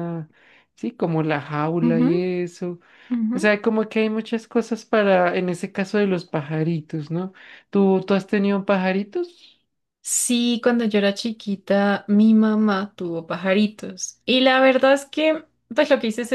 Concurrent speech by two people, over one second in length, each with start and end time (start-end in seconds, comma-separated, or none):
none